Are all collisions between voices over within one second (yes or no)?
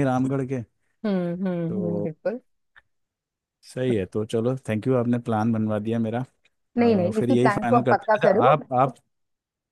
no